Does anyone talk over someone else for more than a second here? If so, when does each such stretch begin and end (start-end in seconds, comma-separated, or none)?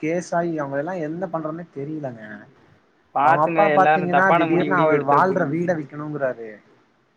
3.2-5.5